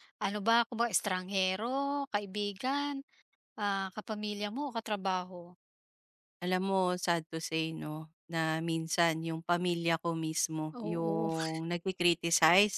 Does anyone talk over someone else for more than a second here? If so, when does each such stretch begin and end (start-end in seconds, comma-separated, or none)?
none